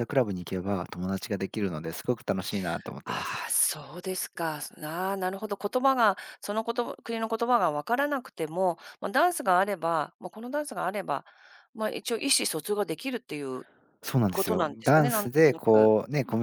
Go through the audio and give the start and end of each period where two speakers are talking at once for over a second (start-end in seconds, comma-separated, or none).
14.3-15.9